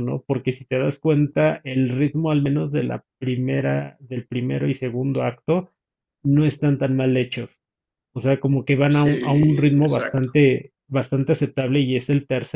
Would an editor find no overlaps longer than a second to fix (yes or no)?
no